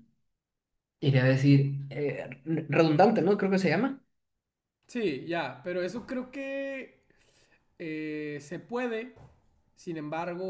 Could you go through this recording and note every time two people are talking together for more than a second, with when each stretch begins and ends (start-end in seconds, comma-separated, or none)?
none